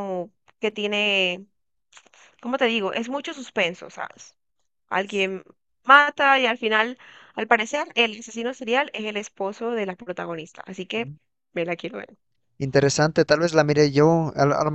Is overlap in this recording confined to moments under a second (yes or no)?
yes